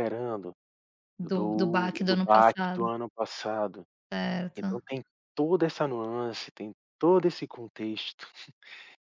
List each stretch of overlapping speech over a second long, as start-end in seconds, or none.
1.3-2.9